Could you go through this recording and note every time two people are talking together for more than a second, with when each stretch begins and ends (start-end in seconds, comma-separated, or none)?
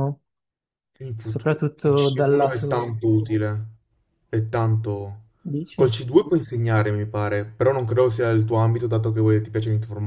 1.2-2.9